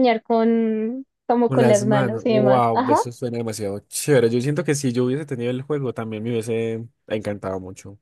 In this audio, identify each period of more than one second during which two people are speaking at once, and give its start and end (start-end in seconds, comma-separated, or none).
1.5-3.0